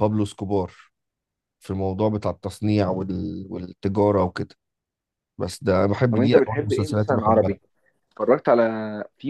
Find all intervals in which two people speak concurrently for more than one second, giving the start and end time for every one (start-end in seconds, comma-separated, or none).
6.1-7.6